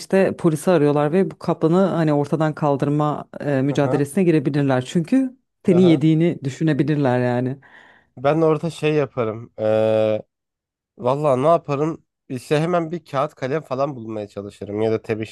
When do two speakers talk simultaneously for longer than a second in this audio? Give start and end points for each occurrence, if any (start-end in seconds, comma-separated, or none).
none